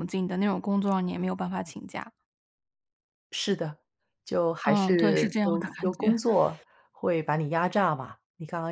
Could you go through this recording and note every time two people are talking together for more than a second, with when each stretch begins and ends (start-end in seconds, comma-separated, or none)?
4.7-6.2